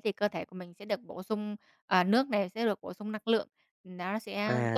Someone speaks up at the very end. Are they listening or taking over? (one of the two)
taking over